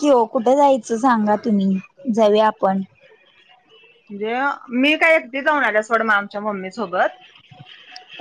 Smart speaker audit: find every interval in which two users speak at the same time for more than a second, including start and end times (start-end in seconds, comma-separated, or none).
none